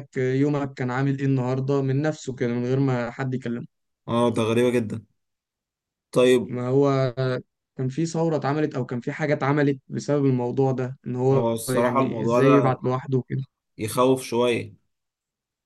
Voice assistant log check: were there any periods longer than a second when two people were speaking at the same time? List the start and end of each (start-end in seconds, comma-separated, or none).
11.3-12.8